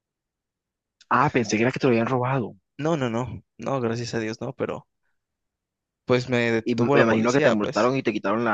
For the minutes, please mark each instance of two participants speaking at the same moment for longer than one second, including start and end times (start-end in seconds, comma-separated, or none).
6.6-7.9